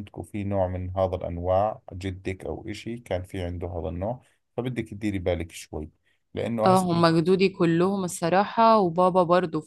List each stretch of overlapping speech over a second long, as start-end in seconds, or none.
none